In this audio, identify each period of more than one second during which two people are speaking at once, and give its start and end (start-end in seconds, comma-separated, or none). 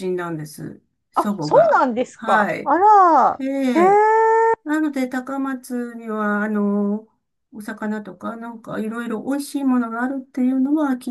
1.1-2.7